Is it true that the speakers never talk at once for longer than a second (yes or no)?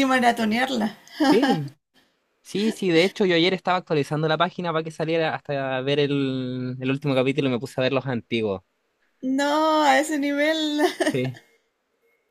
yes